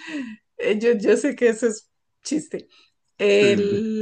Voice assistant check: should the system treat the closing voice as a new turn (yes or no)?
no